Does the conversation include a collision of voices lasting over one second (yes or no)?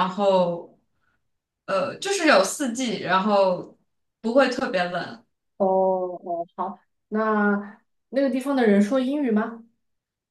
no